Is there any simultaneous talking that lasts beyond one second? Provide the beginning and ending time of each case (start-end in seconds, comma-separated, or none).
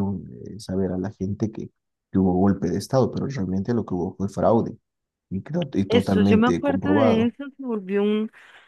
5.9-7.3